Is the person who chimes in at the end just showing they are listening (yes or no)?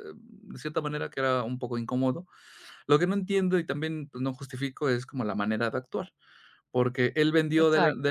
yes